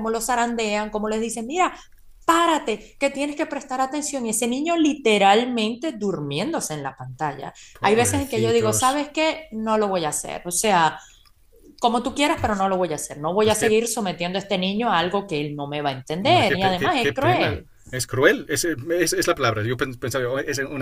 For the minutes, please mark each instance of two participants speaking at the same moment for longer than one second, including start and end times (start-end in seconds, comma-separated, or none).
7.7-9.0, 16.2-17.7